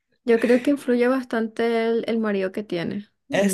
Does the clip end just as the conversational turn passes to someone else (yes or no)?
no